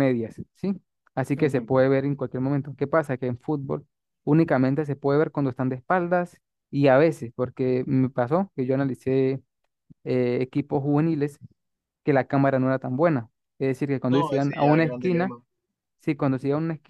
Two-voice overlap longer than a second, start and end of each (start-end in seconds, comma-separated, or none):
14.1-15.3